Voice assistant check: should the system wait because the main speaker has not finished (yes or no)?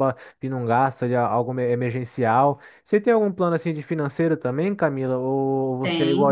yes